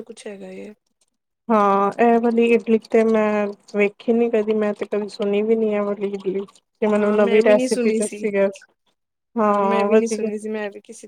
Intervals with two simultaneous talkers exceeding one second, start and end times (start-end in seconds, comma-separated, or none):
6.9-8.2